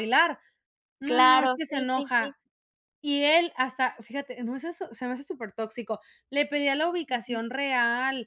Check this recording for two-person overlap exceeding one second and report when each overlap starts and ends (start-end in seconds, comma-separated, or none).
1.0-2.4